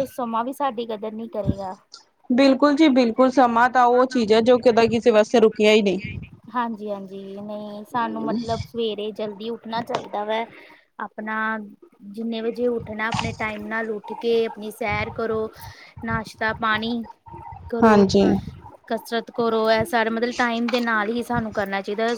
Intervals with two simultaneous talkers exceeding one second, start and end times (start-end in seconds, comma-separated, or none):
none